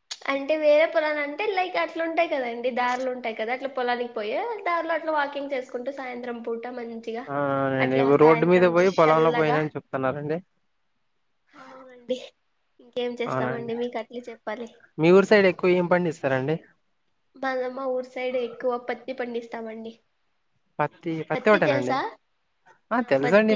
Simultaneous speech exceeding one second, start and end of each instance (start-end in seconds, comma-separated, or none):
7.8-9.6